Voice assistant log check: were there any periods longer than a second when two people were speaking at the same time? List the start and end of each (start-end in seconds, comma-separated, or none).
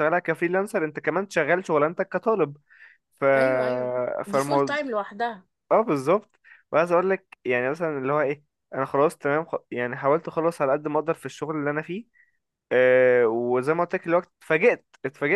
none